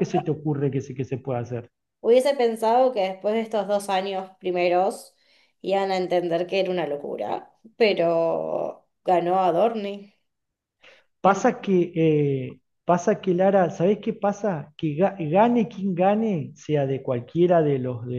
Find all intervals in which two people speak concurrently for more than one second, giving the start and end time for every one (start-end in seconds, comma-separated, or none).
none